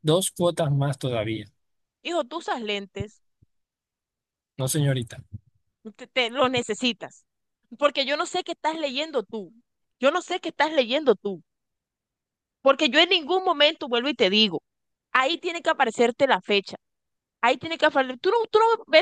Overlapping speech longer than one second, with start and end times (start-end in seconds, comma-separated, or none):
none